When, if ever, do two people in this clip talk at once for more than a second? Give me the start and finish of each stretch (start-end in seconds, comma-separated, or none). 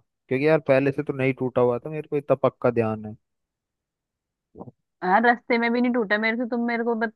none